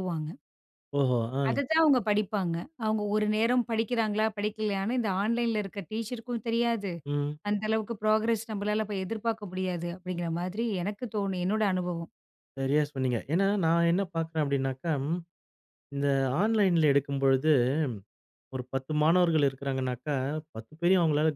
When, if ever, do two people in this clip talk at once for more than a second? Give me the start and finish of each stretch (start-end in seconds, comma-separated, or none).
none